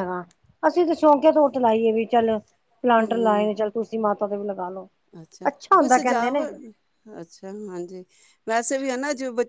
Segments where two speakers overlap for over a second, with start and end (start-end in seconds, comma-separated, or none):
none